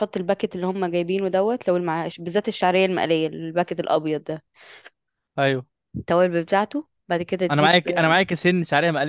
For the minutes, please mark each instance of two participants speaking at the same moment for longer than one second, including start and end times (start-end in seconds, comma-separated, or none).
none